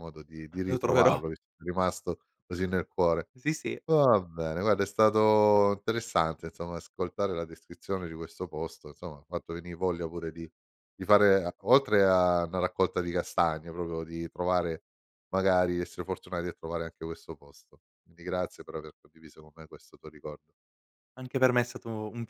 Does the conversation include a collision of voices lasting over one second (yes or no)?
no